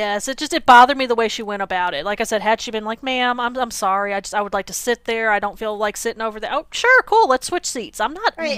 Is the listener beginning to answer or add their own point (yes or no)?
yes